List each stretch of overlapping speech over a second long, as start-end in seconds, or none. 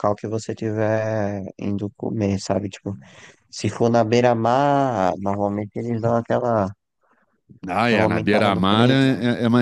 7.8-9.1